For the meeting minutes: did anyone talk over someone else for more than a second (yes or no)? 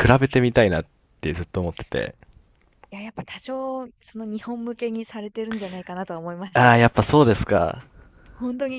no